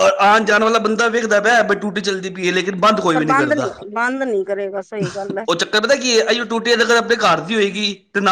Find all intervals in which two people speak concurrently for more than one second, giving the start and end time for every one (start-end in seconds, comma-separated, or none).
none